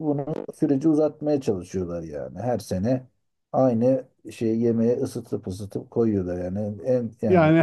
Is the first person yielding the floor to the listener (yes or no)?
yes